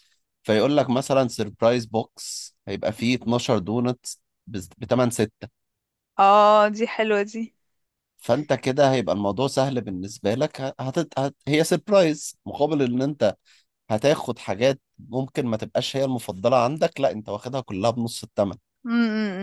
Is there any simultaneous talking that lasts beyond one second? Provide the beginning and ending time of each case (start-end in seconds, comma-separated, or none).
none